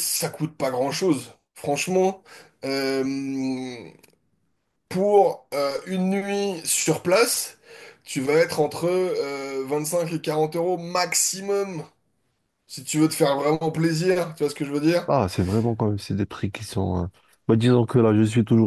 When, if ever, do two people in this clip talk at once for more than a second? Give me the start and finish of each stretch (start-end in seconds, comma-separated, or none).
none